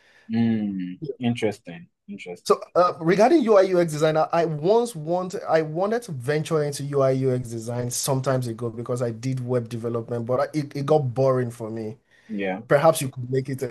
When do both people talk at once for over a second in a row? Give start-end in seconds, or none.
none